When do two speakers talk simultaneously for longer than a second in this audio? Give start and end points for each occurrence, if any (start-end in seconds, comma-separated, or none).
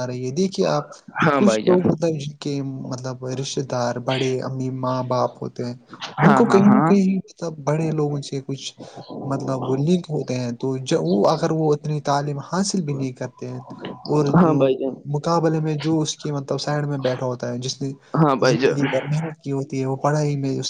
none